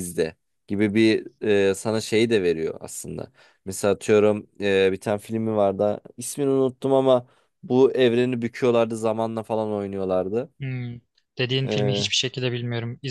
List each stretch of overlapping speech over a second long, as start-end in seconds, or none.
none